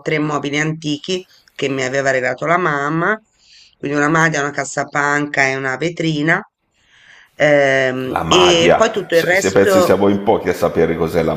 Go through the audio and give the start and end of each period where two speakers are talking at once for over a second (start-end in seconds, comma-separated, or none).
8.1-10.1